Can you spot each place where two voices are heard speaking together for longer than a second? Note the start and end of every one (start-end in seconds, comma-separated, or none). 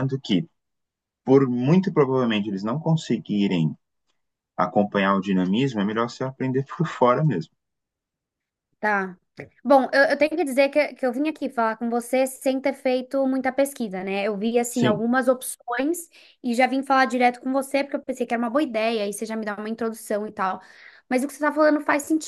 none